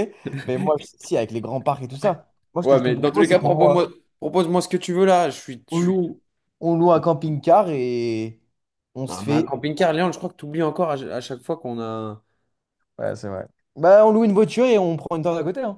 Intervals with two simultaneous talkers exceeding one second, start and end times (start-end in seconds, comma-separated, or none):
2.6-3.8